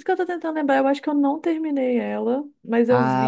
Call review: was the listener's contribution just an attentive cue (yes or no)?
no